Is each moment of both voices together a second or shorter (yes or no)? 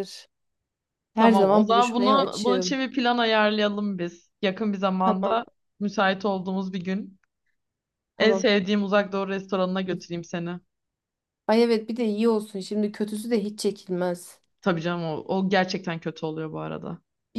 no